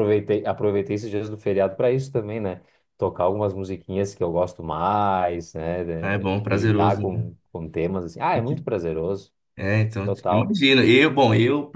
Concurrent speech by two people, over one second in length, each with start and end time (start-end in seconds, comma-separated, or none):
6.0-7.3